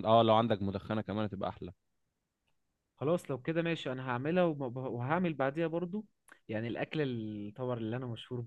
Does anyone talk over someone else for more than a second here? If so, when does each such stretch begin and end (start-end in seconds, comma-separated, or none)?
none